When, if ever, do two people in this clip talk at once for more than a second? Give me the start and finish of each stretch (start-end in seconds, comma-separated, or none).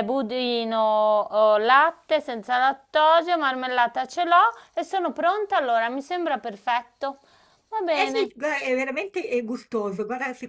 none